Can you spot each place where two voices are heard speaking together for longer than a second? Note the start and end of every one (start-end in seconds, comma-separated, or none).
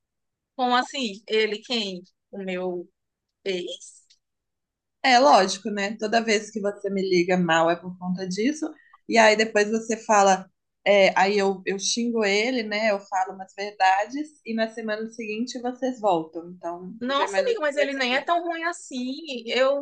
17.0-18.4